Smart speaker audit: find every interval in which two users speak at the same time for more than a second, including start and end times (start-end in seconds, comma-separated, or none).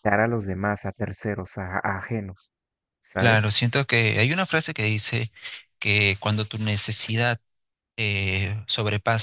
none